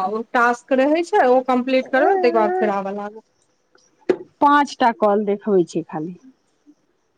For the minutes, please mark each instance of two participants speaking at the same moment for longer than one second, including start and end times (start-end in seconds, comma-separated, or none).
none